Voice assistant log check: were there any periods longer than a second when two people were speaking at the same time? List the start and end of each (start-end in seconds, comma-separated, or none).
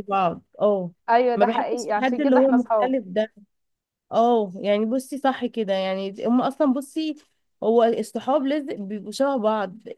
1.4-2.9